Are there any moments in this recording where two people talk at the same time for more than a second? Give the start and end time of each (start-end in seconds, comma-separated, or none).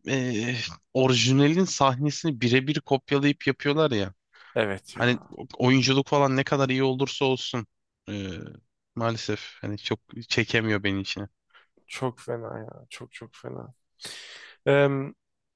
none